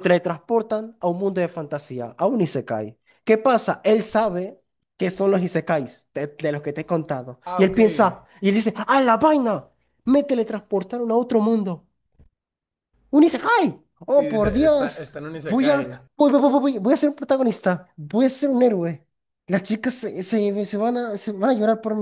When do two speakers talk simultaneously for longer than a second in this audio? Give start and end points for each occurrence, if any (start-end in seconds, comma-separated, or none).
14.1-16.0